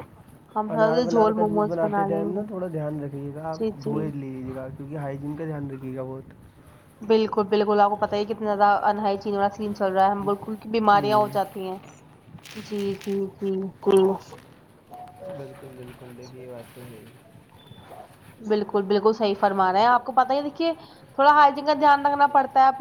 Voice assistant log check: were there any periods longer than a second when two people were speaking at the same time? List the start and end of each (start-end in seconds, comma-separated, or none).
0.8-2.4